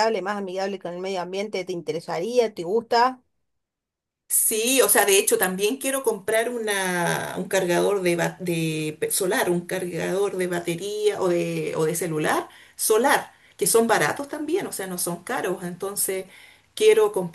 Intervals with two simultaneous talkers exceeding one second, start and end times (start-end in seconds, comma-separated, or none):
none